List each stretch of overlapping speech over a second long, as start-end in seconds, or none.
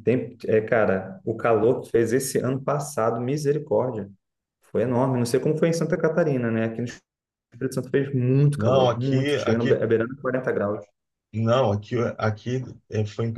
8.6-9.9